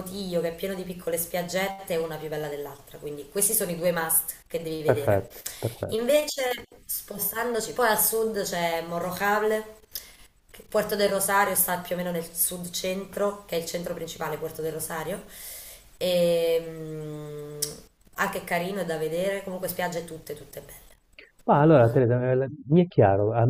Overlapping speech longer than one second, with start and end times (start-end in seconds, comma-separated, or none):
none